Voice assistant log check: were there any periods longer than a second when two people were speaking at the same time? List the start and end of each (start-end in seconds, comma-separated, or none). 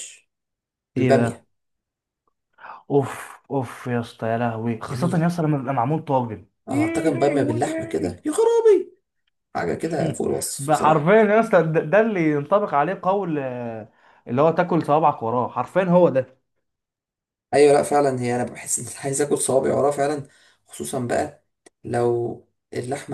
6.7-8.2